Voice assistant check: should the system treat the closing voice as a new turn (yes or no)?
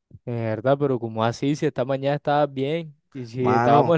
no